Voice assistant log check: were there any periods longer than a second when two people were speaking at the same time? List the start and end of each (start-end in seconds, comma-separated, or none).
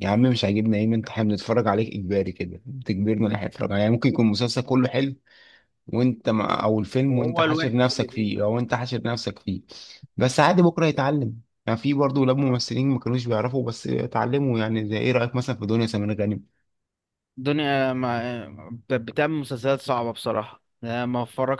7.1-8.3